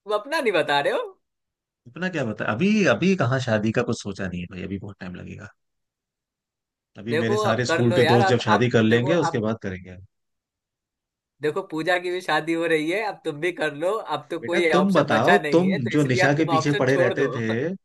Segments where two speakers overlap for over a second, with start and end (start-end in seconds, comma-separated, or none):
7.1-9.4, 14.4-17.3